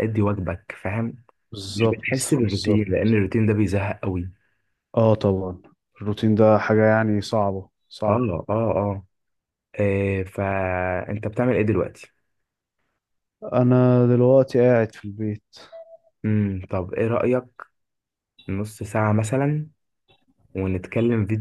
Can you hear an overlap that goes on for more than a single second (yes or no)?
yes